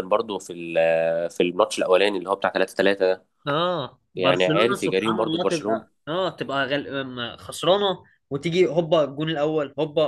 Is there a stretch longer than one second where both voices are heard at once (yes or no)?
yes